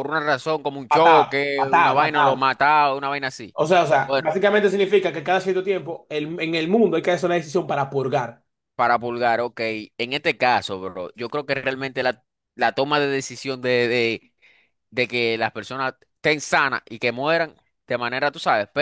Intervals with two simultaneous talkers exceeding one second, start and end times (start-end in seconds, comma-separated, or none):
0.9-2.4